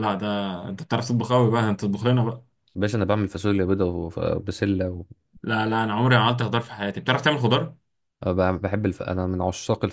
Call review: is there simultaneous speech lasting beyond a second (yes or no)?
no